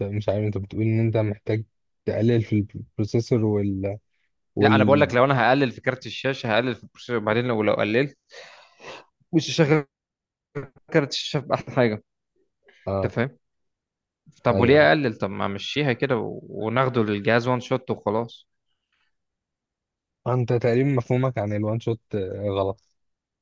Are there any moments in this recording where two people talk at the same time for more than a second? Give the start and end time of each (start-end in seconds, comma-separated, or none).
none